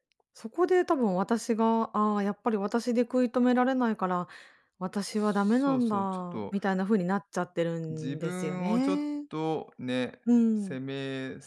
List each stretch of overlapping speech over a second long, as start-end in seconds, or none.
5.1-6.5, 7.9-9.2